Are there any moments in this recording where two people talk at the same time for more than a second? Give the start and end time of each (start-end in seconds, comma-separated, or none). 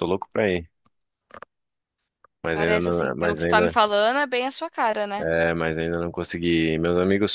2.5-3.8